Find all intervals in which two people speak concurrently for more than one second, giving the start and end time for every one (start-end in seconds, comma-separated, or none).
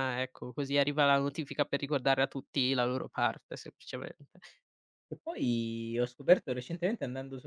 none